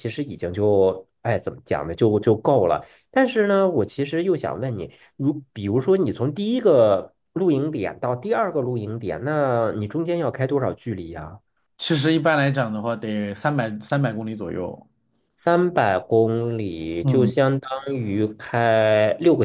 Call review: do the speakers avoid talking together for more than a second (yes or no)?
yes